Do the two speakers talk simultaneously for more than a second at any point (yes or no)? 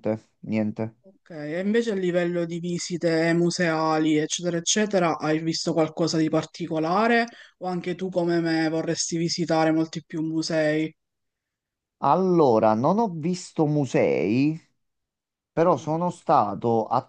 no